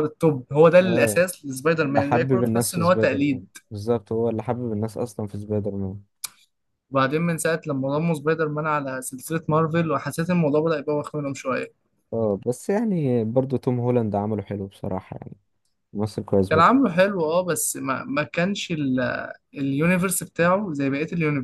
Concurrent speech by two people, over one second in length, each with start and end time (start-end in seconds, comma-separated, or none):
1.8-3.5